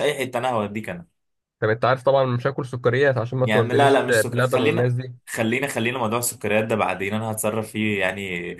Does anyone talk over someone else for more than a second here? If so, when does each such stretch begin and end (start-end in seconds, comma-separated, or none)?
3.4-4.9